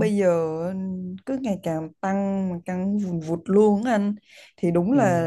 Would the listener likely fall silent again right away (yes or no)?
yes